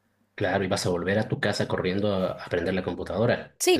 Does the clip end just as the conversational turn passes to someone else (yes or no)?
yes